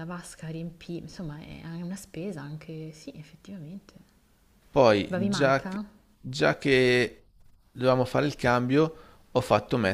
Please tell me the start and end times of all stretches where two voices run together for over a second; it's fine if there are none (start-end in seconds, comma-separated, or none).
none